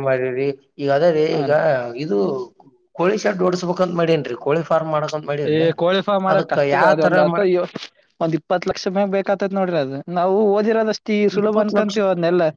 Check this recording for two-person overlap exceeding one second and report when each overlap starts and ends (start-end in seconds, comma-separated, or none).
none